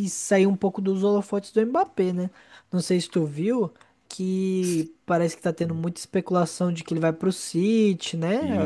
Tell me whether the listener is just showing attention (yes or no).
no